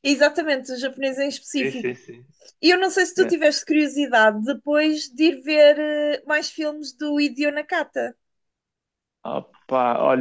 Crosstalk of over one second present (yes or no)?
no